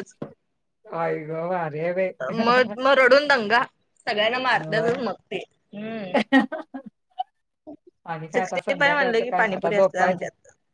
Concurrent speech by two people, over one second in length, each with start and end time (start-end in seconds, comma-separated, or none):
8.3-10.2